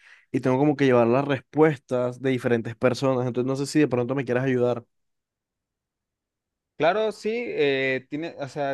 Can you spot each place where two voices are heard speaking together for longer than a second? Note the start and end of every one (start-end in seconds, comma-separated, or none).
none